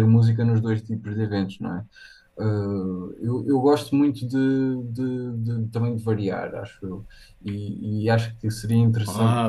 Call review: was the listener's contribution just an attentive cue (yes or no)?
yes